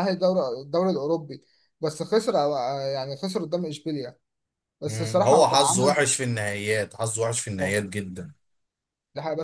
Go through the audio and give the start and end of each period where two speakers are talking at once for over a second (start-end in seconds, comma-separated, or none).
4.8-6.0